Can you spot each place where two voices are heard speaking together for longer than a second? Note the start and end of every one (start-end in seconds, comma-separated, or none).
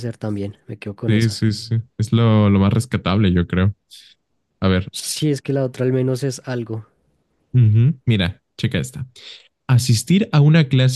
none